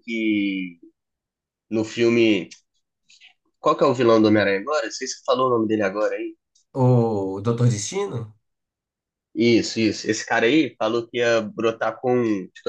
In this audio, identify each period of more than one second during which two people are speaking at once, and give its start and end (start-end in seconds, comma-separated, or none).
none